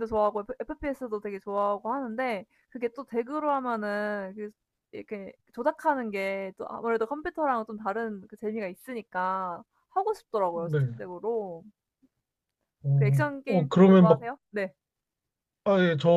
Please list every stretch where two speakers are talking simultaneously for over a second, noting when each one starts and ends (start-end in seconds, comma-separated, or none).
12.9-14.3